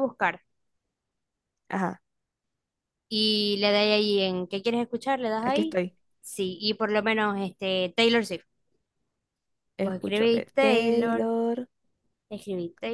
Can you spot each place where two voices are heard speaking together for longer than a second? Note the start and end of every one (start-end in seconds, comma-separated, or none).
9.8-11.3